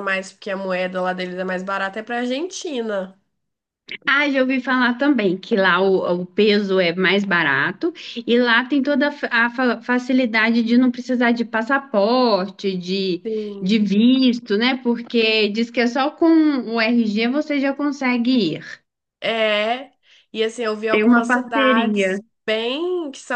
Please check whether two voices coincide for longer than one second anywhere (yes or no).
yes